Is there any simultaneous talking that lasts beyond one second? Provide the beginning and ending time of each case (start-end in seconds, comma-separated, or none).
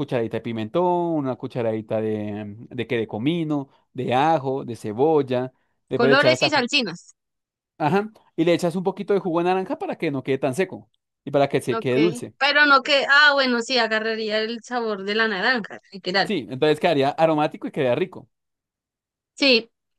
none